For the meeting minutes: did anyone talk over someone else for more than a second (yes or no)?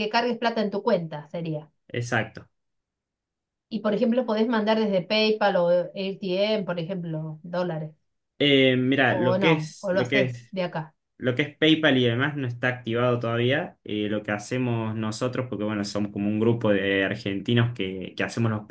yes